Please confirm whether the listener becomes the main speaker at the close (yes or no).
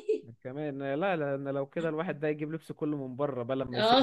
yes